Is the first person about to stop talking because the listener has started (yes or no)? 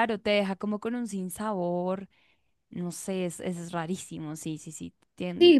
yes